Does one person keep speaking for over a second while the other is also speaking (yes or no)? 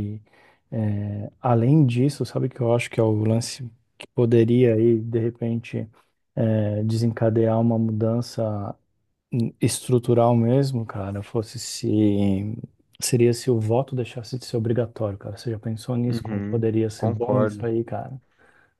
yes